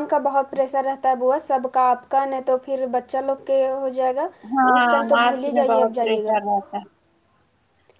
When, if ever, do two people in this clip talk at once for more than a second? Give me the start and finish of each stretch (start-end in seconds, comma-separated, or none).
4.8-6.4